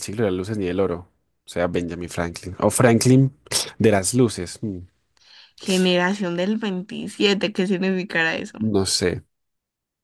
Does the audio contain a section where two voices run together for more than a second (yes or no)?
no